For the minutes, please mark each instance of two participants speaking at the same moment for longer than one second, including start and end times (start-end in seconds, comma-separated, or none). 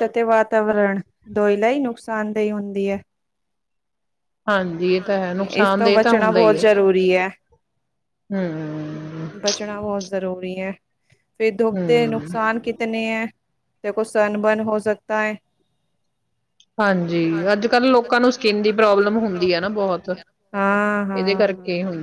5.0-6.6